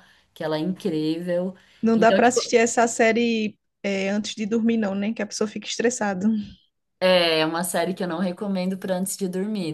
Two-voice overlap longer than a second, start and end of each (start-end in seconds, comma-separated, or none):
none